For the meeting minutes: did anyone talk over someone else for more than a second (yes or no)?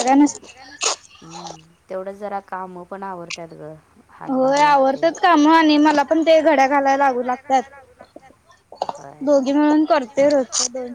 no